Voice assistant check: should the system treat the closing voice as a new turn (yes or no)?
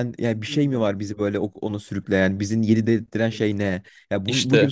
no